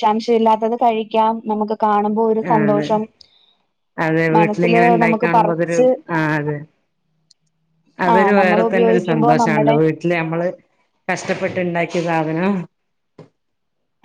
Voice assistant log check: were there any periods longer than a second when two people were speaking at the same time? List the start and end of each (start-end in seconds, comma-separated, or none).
4.4-5.8, 8.1-9.8